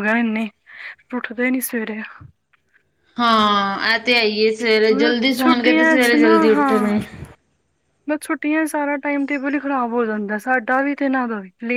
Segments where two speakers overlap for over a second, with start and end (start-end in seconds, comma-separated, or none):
5.3-6.9